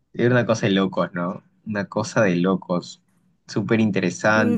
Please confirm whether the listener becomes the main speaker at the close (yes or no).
yes